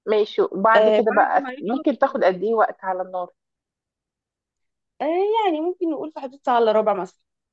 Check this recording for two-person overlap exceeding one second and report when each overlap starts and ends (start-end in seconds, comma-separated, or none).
0.8-2.3